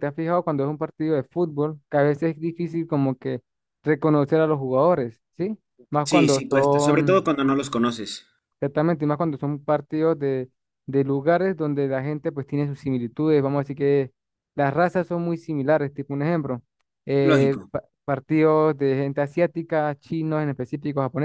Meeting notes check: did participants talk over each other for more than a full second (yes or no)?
yes